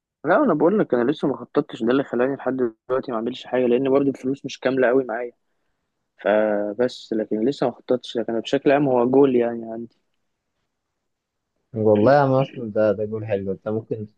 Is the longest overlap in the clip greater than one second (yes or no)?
no